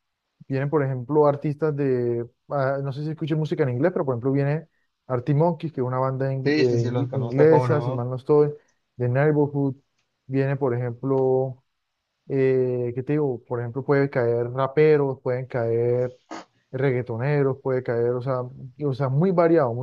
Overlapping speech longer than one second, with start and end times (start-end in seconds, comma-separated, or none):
6.4-8.1